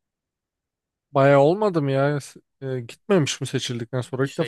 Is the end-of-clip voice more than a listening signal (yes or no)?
yes